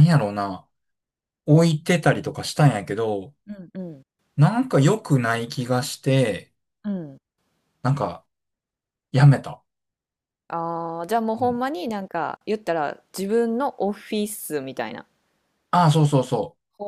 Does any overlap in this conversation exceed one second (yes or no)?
no